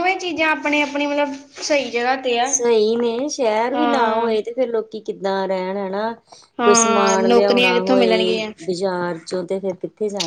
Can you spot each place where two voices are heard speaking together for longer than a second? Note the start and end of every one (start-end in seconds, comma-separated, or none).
6.6-8.5